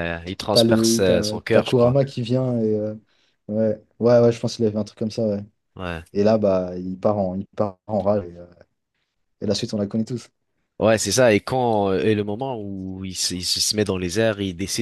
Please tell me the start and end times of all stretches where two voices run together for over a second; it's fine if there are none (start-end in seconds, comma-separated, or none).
0.5-2.0